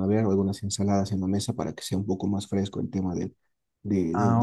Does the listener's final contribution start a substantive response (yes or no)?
yes